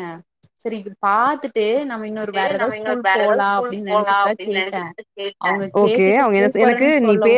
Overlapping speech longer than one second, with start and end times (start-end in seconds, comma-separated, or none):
2.6-4.5